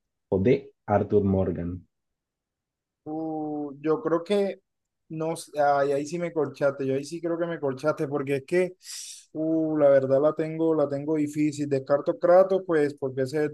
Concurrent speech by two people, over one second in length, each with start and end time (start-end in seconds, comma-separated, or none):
none